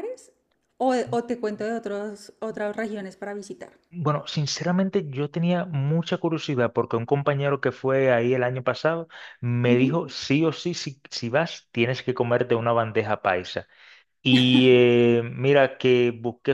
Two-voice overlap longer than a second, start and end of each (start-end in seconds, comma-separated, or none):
none